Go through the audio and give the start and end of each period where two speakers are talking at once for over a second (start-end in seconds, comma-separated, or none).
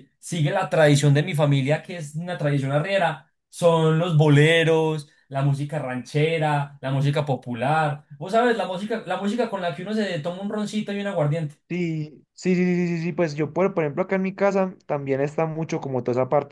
none